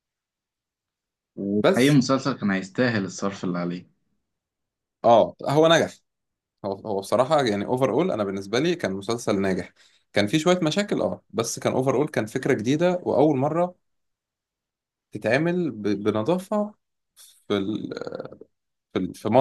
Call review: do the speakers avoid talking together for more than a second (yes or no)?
yes